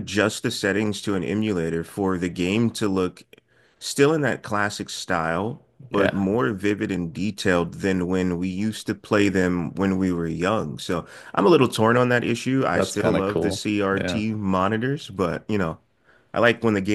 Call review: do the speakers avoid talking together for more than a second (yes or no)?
no